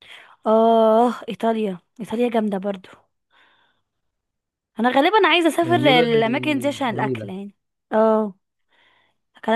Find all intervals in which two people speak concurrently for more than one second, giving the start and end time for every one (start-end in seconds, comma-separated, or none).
5.6-7.3